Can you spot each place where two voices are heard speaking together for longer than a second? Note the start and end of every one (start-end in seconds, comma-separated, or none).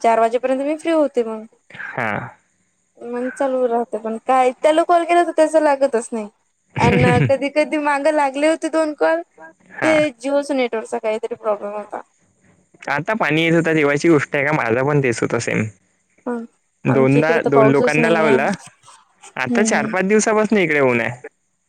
16.9-18.5